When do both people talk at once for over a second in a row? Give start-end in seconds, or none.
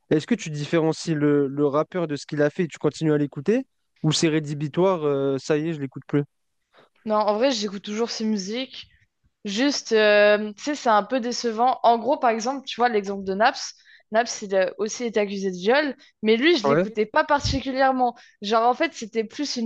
none